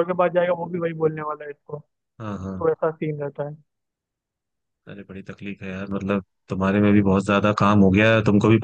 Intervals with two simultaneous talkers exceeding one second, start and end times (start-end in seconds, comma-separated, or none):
none